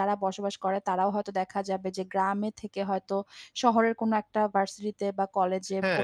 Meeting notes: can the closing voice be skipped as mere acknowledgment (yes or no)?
yes